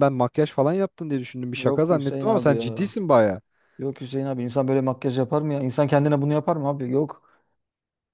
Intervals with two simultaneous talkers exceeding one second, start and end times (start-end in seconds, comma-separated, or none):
1.5-3.0